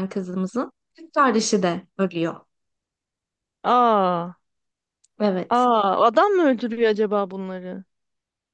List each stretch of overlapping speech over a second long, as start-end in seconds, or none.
none